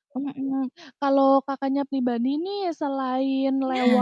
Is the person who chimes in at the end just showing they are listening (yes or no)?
yes